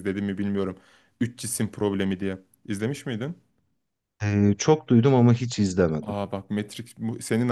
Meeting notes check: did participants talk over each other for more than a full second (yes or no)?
no